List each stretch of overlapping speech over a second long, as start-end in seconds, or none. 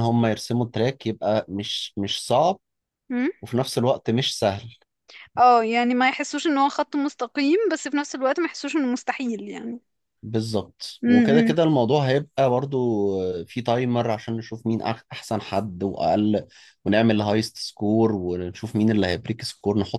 none